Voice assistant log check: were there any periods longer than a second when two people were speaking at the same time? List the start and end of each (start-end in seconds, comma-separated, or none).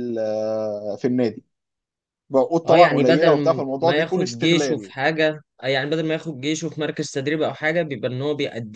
2.7-4.9